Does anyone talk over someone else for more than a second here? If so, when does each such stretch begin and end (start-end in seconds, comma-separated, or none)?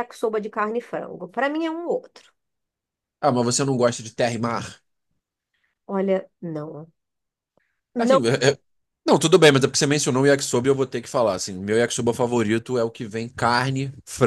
none